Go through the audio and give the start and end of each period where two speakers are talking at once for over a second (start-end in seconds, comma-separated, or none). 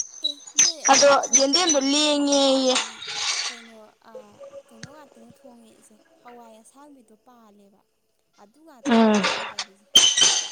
0.9-2.8